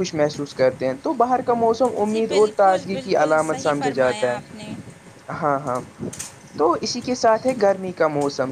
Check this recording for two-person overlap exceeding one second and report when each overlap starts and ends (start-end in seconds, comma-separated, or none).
2.0-4.7